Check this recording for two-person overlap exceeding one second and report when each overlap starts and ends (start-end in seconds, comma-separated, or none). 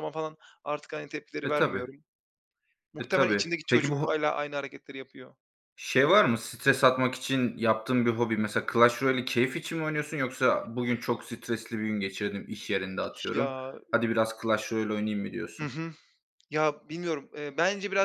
3.0-4.2